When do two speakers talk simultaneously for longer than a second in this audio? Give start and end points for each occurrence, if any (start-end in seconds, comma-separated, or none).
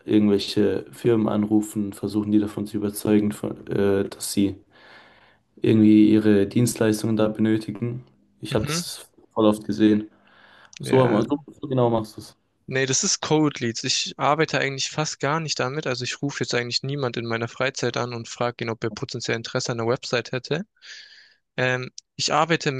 none